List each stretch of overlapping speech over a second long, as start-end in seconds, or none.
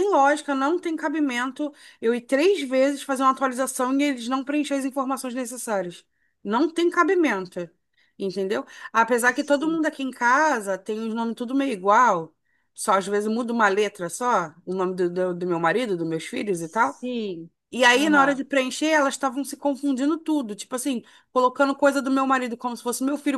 none